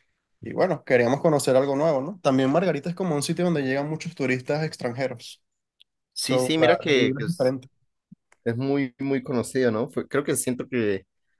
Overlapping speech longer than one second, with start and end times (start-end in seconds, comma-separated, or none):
6.1-7.5